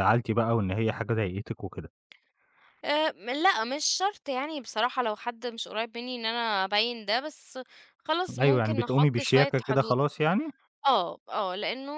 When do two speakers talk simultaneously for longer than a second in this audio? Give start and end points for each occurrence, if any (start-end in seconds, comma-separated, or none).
8.4-10.0